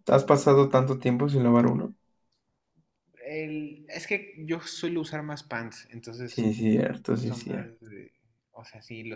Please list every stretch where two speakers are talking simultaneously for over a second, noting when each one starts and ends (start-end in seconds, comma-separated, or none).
none